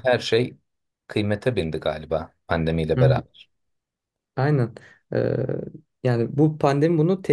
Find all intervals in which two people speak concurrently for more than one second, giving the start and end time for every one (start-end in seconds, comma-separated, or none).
none